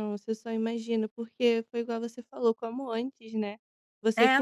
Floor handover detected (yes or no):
no